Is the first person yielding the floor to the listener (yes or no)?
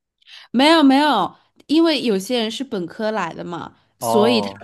no